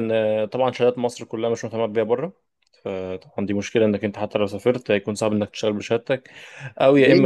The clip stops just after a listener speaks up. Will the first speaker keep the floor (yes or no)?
no